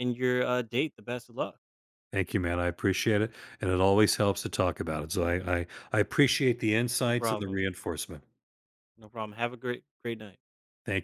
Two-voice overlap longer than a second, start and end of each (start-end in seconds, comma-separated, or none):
none